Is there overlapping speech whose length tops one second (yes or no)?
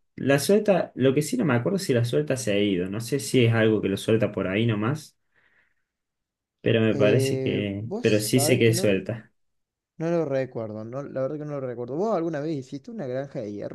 yes